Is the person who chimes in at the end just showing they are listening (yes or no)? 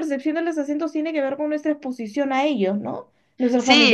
no